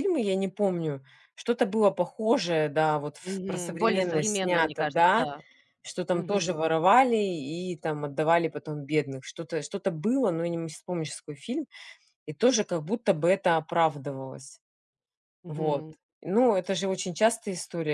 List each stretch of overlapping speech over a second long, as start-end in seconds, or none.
3.2-5.3